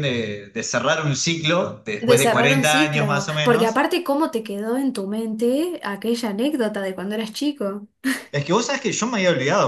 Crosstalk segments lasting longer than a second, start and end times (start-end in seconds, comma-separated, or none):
2.1-3.9